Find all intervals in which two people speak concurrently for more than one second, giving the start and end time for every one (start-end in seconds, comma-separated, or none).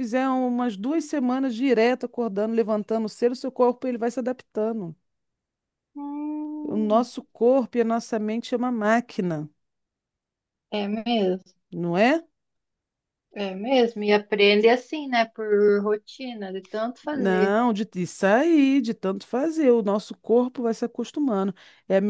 none